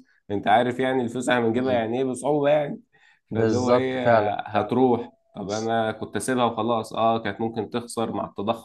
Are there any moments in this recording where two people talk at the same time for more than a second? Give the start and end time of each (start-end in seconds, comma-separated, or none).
3.3-4.8